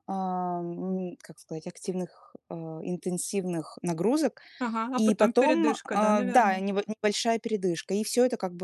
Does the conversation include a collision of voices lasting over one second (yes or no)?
yes